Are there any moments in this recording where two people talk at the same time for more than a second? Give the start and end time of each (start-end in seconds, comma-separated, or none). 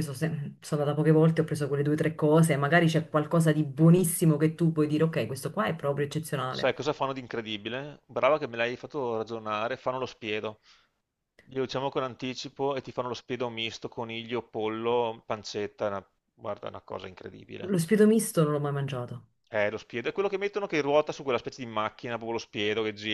none